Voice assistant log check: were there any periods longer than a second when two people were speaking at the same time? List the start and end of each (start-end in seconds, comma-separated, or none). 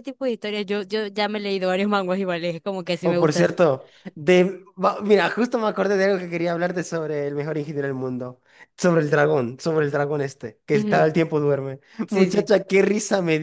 none